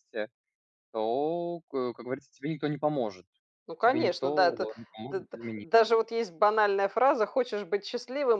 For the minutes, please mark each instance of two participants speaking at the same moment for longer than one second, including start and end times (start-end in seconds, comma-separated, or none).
3.8-5.7